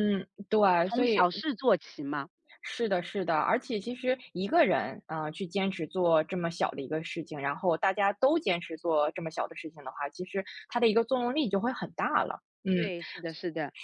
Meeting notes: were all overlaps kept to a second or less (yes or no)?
yes